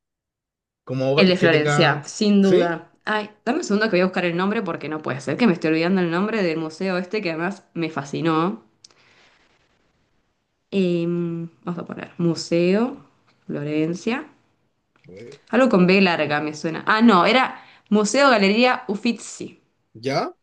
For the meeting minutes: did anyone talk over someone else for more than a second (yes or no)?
yes